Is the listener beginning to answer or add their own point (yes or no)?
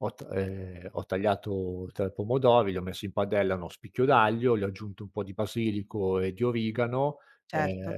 no